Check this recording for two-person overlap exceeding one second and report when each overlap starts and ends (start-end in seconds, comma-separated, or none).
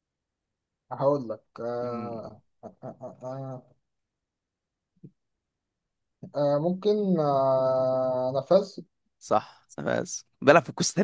none